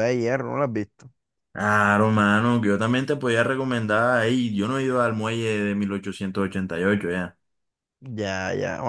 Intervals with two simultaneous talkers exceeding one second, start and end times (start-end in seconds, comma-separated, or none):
none